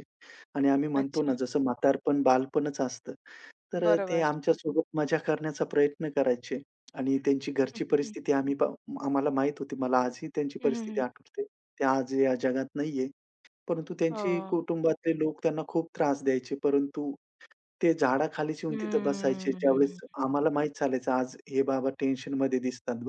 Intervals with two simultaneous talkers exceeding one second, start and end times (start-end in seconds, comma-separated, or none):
18.7-20.0